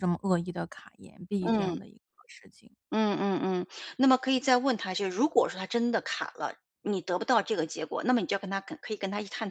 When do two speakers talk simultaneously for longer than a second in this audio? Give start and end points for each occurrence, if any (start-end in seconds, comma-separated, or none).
none